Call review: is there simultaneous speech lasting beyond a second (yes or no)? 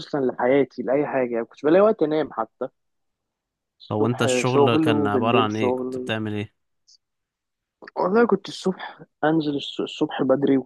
yes